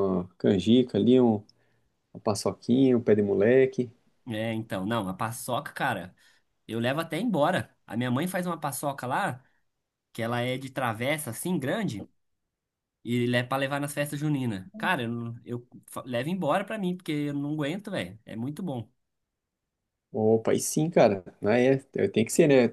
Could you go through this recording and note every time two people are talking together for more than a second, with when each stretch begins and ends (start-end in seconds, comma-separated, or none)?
none